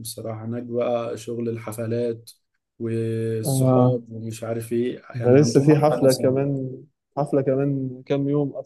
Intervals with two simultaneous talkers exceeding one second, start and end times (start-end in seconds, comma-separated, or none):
5.1-6.4